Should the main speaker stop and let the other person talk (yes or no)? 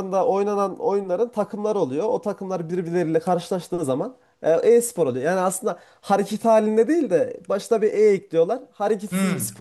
yes